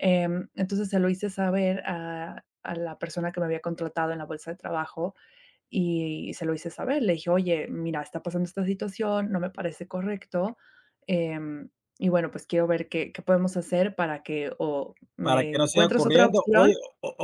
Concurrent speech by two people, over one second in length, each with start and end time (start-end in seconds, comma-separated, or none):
15.2-16.7